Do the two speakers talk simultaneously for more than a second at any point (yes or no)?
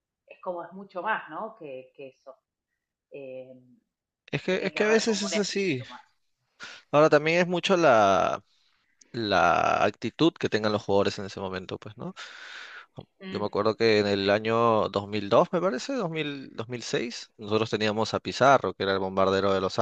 yes